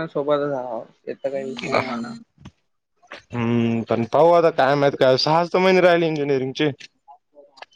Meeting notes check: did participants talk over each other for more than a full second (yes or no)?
no